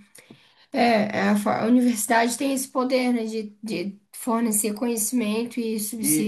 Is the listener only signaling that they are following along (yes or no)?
no